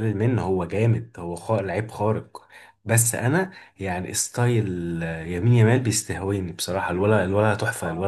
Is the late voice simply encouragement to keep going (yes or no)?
no